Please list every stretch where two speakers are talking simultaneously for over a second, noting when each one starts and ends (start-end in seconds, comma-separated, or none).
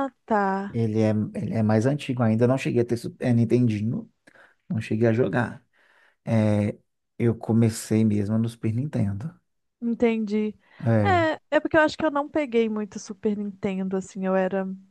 none